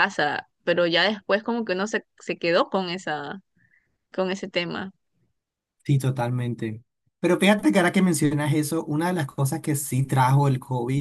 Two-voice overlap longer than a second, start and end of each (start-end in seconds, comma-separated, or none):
none